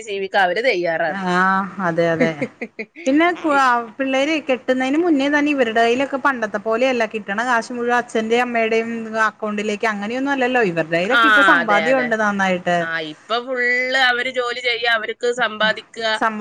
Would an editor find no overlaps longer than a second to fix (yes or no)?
yes